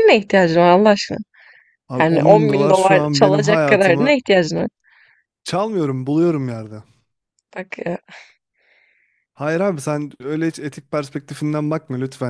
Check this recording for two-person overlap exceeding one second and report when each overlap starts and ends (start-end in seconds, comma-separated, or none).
2.0-4.1